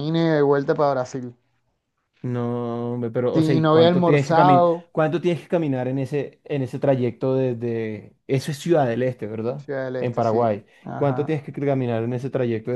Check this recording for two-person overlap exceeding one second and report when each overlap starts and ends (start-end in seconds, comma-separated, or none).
3.3-4.9, 9.6-11.4